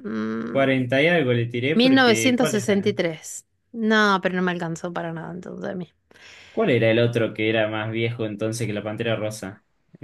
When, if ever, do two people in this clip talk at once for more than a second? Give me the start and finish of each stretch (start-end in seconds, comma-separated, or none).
1.7-2.9